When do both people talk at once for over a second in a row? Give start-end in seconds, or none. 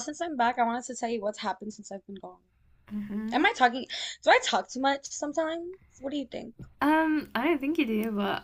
none